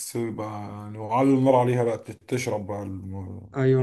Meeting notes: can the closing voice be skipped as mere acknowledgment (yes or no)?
no